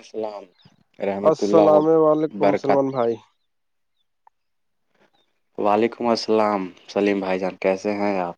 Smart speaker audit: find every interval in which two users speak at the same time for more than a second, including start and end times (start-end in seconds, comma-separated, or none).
1.3-2.8